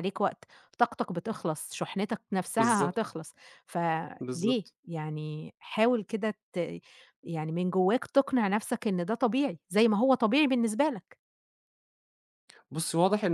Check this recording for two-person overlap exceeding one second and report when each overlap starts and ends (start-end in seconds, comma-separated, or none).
none